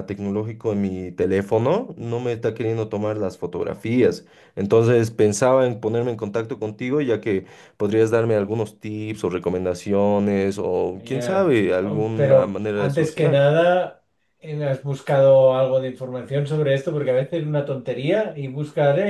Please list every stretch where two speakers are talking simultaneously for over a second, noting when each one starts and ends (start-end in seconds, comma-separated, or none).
10.9-13.4